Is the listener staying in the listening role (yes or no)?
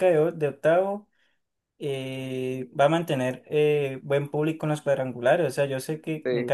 yes